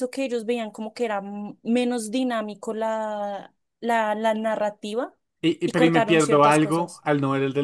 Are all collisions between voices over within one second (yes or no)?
no